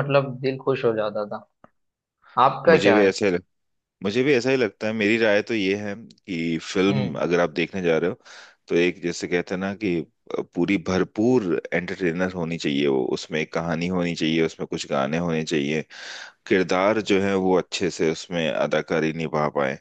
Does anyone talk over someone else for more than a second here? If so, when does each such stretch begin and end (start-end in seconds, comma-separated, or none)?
none